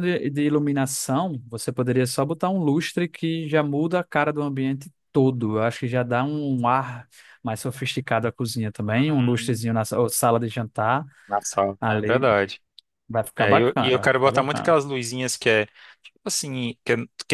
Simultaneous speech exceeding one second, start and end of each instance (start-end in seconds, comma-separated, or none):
13.4-14.8